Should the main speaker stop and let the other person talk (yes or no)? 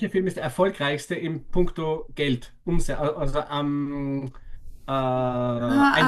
yes